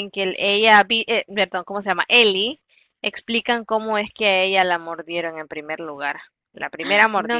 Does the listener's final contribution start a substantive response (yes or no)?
yes